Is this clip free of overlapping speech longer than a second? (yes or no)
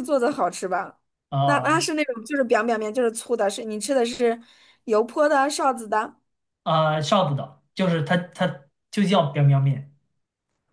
yes